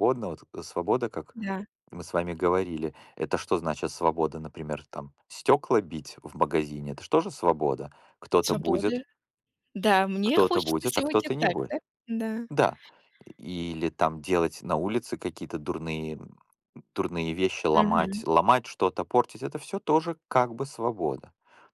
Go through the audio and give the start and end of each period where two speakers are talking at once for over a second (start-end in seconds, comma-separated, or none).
10.2-11.8